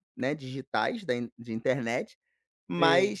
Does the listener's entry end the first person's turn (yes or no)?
no